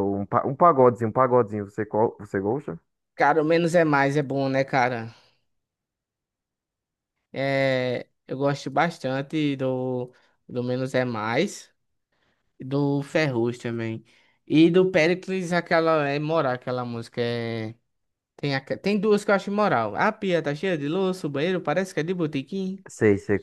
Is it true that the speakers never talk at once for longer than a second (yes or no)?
yes